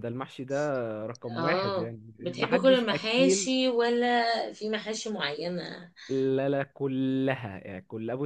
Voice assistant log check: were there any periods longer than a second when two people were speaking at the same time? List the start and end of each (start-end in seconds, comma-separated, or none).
1.4-3.5